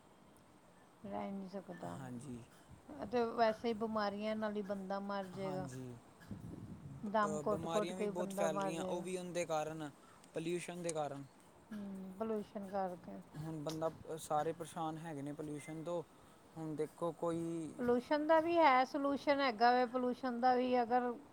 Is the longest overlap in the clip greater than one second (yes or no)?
yes